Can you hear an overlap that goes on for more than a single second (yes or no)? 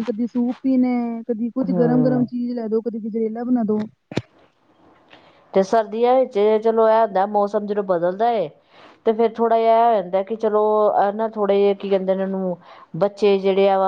no